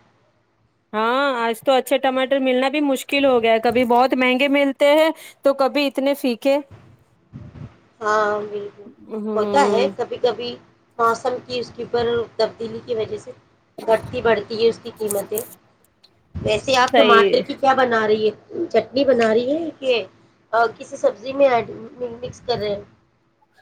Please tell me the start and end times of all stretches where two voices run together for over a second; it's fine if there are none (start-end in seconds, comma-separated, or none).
none